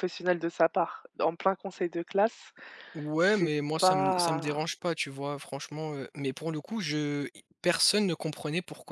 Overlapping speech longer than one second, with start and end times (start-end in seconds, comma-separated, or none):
3.1-4.6